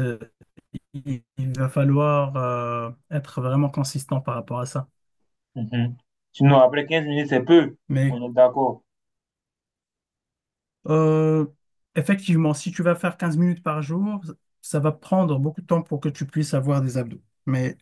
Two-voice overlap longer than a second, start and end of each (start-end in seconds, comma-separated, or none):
none